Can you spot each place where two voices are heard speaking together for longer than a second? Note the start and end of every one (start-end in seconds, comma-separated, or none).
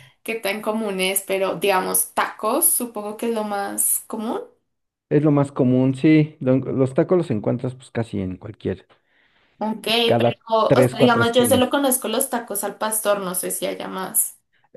10.2-11.8